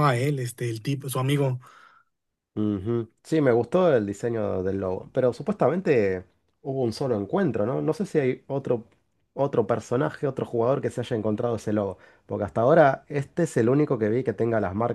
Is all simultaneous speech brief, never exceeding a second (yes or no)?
yes